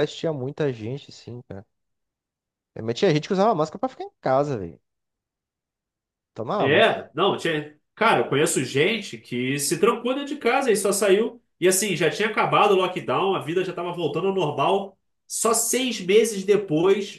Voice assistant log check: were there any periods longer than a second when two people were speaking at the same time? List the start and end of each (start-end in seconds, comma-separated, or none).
none